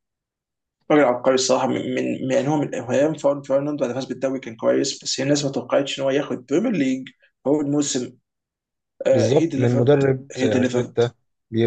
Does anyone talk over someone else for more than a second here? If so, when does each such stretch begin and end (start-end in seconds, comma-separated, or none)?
9.1-11.0